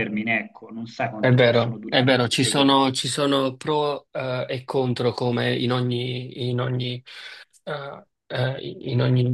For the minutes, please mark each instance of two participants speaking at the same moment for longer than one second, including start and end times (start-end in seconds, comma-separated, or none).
1.2-3.0